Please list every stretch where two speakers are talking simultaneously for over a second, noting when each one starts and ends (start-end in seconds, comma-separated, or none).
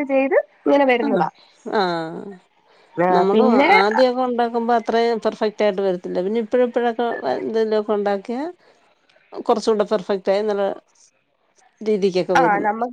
none